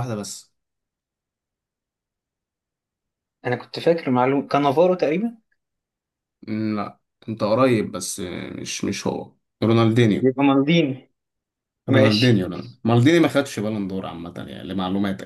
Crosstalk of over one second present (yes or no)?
no